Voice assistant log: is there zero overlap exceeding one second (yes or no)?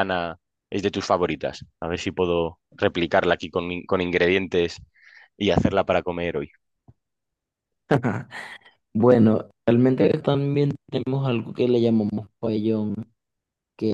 yes